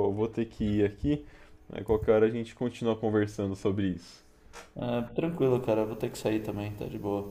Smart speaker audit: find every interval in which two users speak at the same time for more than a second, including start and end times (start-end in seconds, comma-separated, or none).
none